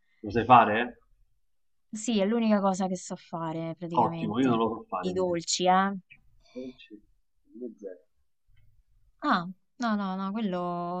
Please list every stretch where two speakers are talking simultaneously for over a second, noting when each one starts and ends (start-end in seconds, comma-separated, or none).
4.0-5.4